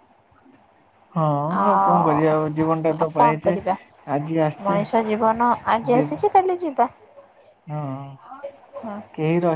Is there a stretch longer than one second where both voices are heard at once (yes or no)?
yes